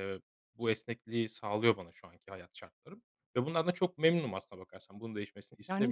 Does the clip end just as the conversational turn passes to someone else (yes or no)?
yes